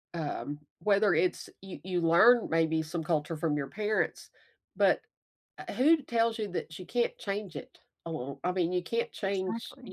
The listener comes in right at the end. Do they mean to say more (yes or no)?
yes